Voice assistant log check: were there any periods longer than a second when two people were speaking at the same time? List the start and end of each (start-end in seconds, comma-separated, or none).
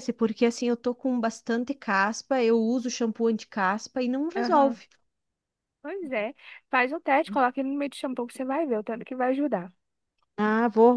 none